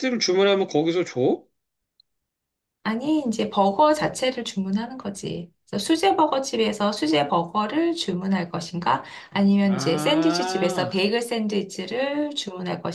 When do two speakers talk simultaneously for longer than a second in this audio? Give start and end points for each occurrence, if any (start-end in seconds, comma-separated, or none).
9.7-11.0